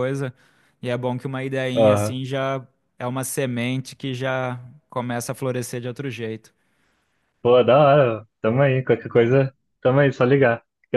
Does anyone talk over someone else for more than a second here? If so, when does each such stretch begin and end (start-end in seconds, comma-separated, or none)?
none